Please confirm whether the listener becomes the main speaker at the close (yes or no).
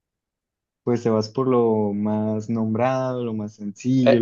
yes